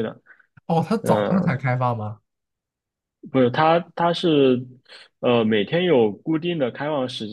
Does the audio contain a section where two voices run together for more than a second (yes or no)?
no